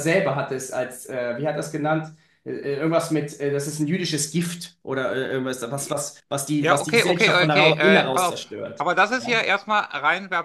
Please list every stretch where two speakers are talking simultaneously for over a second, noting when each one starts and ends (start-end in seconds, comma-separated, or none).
6.6-9.3